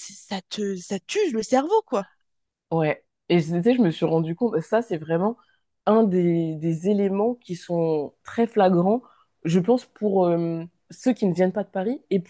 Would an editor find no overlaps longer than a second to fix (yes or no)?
yes